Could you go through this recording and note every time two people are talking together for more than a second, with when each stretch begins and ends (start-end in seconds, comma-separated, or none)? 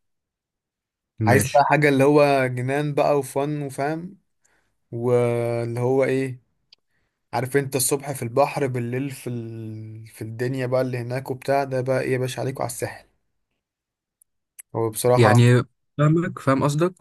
none